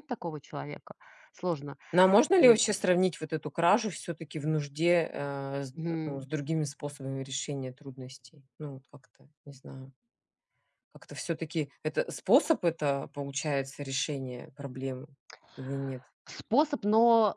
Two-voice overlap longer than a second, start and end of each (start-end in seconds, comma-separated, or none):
none